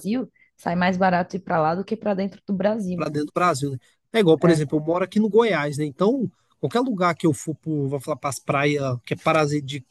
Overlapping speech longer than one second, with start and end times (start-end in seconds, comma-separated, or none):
none